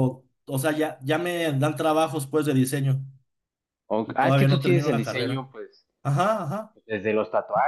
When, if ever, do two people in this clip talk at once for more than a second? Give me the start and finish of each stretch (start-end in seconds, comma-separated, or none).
4.0-5.5